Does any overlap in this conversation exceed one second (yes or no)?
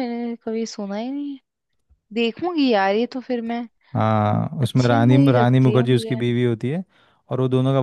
yes